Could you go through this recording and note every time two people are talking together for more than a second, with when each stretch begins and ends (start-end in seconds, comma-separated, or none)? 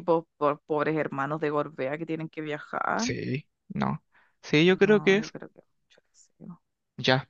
none